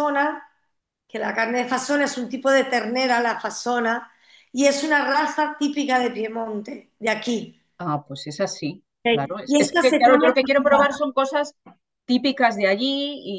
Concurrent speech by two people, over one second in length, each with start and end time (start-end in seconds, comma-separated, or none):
9.0-10.8